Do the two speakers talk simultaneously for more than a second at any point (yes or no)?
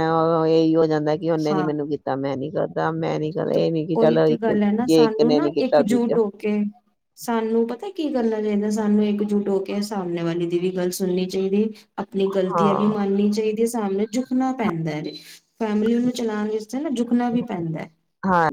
yes